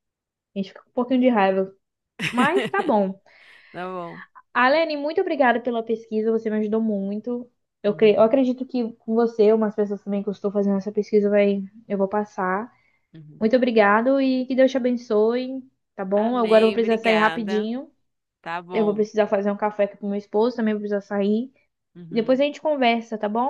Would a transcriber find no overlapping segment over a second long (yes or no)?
no